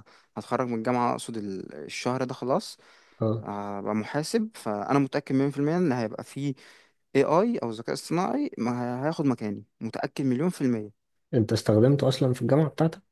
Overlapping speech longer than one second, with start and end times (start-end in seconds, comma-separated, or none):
none